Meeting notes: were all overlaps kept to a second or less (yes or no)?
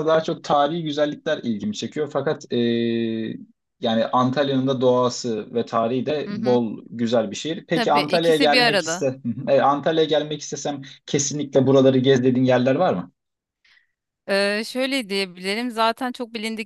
no